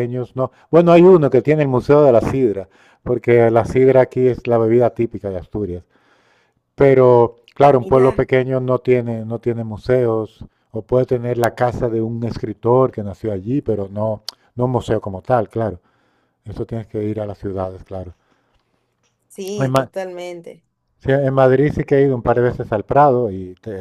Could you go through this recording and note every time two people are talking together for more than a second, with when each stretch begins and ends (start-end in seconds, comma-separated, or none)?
none